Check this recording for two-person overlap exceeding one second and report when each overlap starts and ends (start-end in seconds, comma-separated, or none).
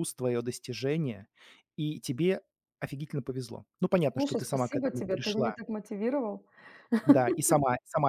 4.1-5.5